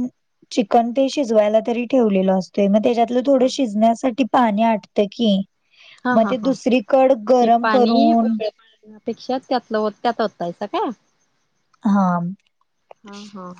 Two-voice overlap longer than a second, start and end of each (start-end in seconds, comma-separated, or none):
none